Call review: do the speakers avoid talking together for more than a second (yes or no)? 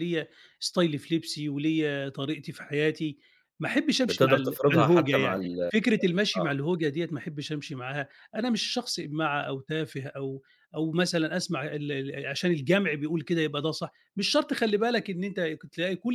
no